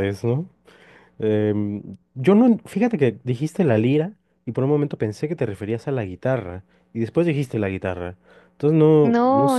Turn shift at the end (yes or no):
yes